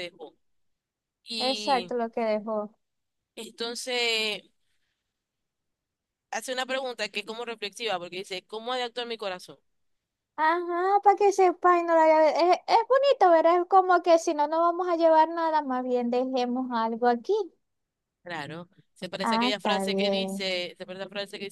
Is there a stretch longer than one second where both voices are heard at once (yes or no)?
yes